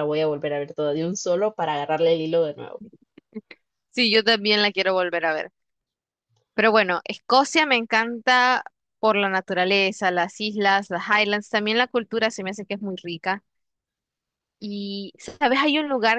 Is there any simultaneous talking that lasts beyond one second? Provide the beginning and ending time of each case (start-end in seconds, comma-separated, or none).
none